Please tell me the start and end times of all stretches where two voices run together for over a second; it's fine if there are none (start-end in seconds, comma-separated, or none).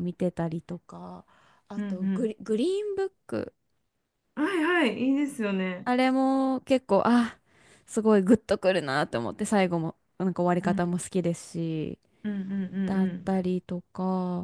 none